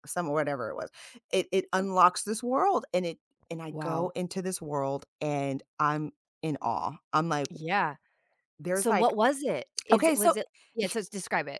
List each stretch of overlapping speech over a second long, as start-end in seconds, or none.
none